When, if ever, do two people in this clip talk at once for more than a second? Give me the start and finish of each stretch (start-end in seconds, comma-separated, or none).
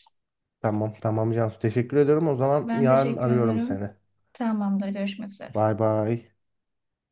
2.6-3.9